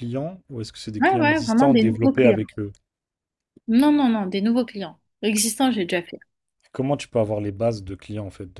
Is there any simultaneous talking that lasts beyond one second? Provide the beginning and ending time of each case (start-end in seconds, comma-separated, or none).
1.0-2.4